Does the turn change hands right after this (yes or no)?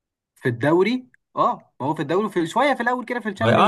yes